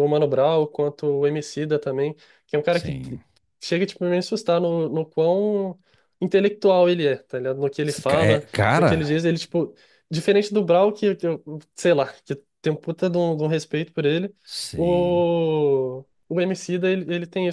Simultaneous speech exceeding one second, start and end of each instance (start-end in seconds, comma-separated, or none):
7.8-9.3